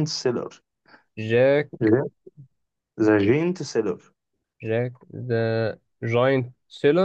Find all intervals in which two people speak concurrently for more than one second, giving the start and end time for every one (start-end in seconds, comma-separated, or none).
none